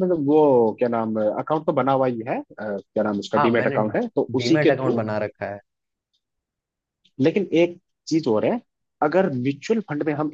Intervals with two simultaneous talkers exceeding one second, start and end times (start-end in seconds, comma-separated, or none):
none